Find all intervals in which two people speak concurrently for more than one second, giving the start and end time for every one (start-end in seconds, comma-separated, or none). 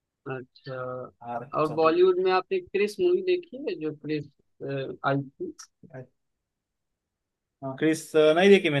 none